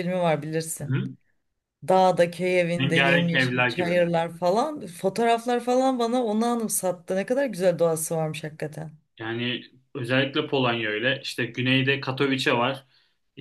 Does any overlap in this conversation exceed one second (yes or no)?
yes